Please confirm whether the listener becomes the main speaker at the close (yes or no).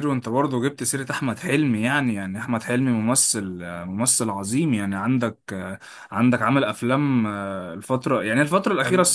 yes